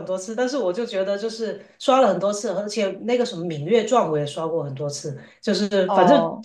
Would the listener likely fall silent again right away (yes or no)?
yes